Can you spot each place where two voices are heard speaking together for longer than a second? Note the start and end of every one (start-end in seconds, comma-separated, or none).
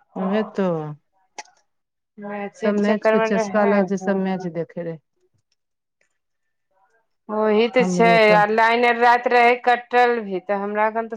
2.6-4.5